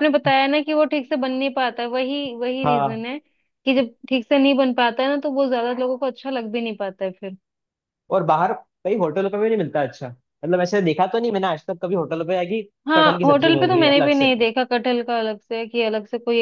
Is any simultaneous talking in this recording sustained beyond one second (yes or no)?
yes